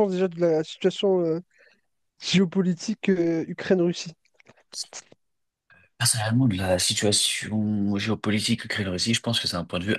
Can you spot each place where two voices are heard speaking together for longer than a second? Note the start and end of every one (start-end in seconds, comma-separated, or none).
none